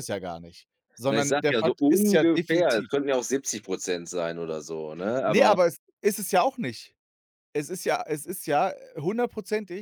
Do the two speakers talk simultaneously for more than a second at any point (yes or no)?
yes